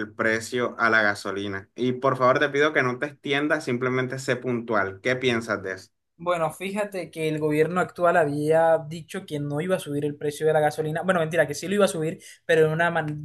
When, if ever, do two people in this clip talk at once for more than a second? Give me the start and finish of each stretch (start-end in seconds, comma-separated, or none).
none